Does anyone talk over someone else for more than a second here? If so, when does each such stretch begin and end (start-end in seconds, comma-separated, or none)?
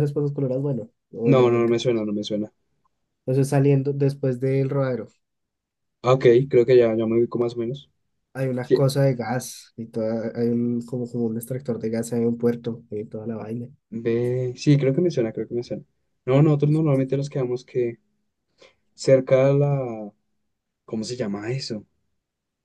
none